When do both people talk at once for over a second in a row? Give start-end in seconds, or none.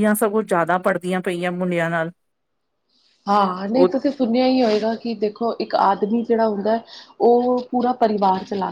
none